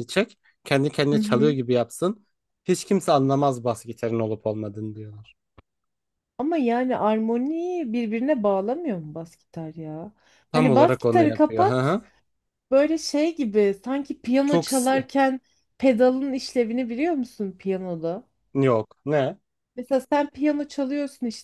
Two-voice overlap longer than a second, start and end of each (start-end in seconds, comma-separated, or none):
10.5-12.0